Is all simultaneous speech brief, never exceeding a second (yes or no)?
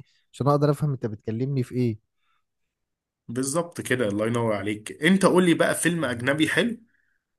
yes